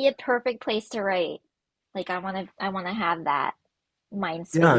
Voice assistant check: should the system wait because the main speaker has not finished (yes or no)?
no